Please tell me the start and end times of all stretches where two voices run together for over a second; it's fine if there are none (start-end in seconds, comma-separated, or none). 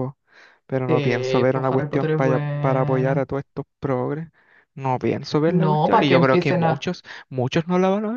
0.9-3.2, 5.5-6.9